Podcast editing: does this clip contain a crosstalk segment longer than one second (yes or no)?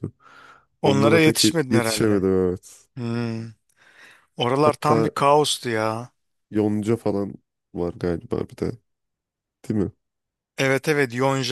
yes